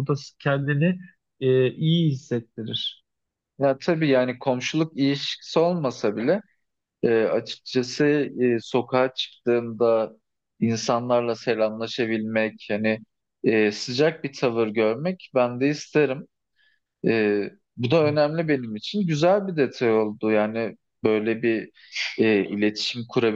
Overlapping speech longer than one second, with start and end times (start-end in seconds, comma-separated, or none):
none